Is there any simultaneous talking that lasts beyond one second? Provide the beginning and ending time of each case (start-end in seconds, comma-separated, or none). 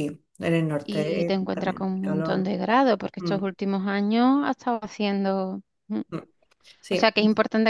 0.8-2.5